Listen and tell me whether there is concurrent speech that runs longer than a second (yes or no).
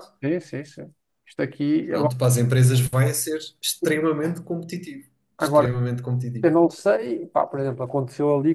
no